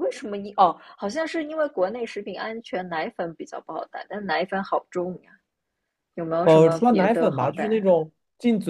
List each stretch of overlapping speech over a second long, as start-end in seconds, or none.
6.4-7.9